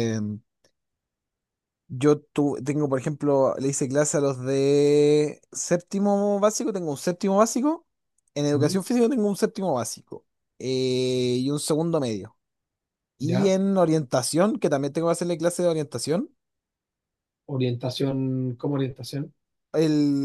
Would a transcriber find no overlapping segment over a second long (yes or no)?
yes